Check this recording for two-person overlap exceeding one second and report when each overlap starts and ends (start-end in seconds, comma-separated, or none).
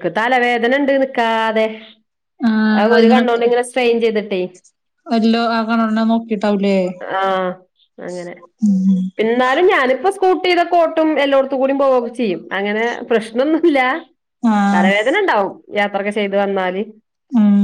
none